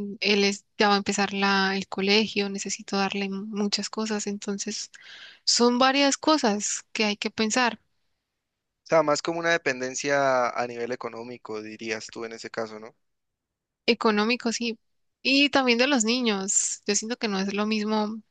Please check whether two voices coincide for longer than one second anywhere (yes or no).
no